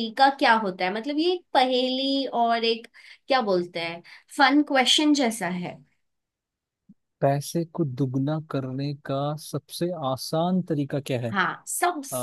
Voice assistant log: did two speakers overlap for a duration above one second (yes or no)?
no